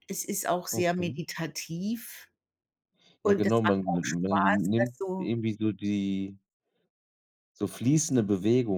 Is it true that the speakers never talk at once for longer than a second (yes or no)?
no